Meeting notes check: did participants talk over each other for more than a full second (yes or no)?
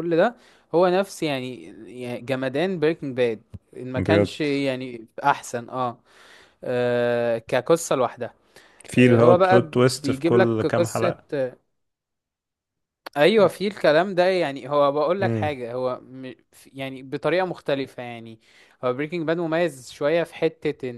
yes